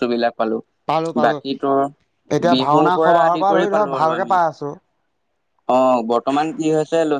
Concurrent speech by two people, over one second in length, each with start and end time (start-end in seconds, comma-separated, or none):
2.5-4.4